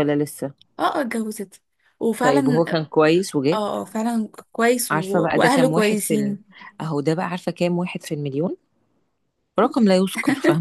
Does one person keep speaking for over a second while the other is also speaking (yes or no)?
yes